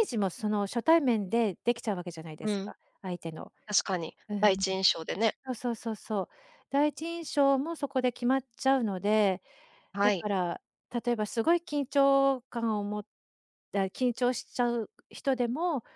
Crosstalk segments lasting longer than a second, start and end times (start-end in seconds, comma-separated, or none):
none